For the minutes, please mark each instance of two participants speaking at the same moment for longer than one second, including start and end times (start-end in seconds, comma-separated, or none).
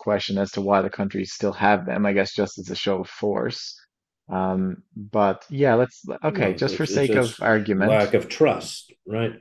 6.3-8.0